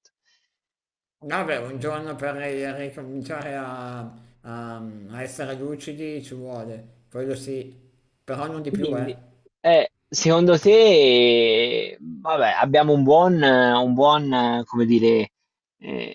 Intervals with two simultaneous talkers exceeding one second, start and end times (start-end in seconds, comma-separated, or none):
none